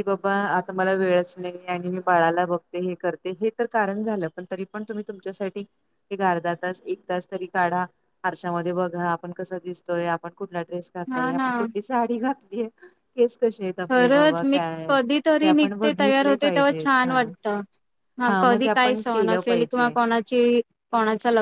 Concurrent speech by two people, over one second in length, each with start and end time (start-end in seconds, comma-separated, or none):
15.4-17.1, 18.4-19.9